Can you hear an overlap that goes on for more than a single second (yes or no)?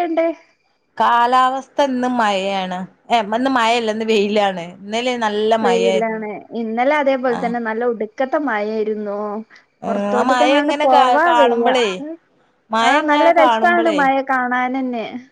yes